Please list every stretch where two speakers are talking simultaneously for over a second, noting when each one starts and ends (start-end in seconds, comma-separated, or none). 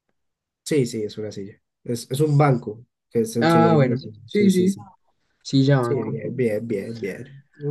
3.4-4.8